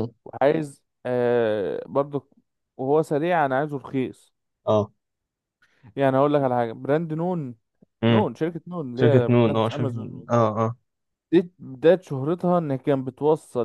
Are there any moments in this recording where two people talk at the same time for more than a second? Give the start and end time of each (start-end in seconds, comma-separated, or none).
8.9-10.3